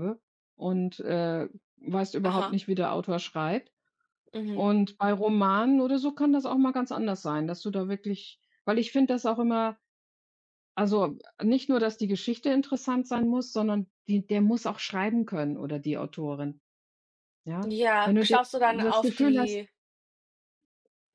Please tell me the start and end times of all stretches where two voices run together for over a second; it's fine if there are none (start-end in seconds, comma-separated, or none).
17.7-19.6